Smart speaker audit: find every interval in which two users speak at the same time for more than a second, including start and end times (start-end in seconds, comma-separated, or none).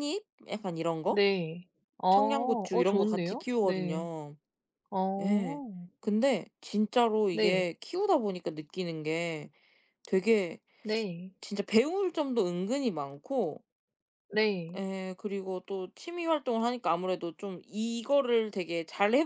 2.1-4.1